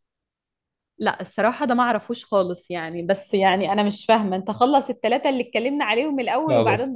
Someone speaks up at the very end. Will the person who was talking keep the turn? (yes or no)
yes